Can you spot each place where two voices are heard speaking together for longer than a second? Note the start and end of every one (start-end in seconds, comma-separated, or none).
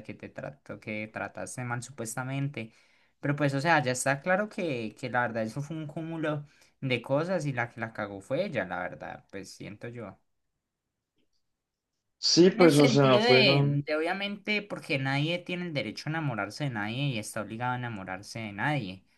12.4-13.9